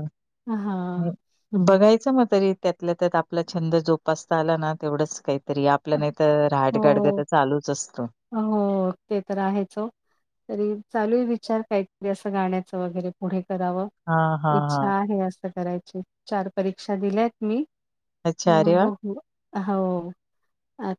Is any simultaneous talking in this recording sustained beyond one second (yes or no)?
no